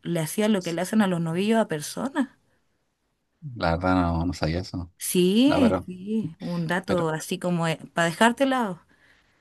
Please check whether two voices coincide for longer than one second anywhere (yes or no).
no